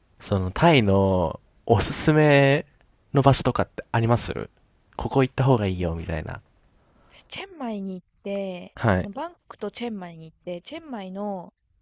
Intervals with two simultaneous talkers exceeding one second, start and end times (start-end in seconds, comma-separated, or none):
none